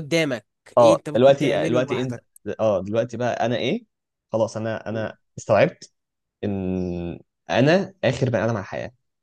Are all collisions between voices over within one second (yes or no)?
no